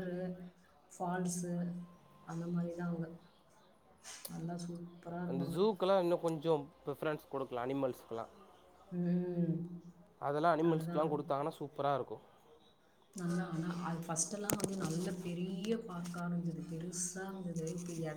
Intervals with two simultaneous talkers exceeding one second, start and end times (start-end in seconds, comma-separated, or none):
none